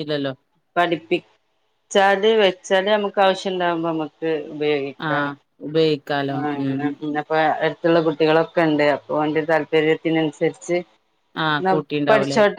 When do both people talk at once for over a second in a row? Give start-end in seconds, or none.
none